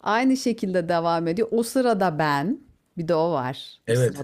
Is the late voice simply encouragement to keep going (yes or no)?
no